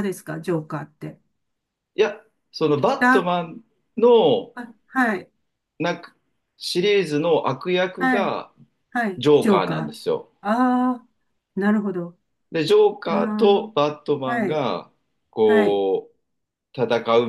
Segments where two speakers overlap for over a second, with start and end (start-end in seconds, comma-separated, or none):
none